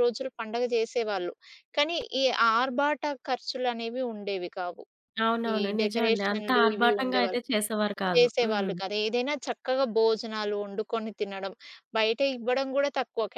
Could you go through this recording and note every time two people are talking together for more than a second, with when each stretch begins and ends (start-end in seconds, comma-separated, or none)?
5.5-7.4